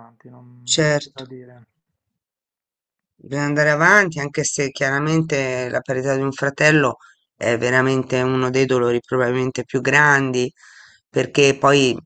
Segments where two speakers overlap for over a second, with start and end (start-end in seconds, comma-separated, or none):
none